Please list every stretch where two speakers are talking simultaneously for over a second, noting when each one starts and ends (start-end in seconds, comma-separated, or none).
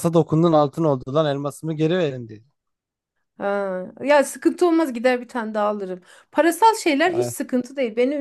none